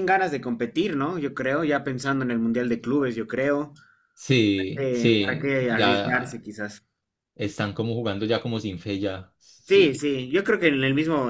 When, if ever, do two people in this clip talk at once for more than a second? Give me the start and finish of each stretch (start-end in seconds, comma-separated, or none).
4.8-6.4